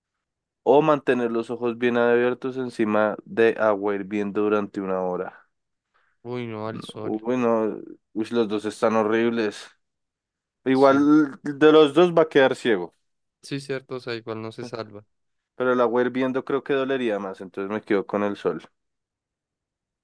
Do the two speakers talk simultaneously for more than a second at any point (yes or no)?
no